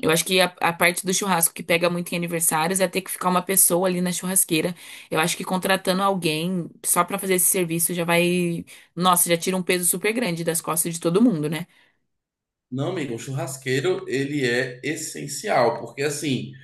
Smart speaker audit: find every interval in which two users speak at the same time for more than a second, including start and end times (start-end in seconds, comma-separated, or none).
none